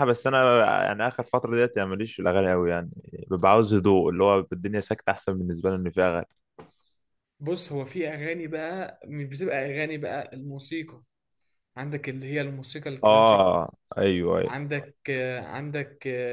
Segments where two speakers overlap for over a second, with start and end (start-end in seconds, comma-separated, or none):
none